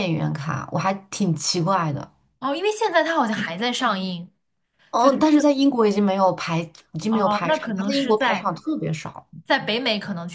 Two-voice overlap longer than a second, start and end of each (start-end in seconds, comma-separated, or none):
7.1-8.5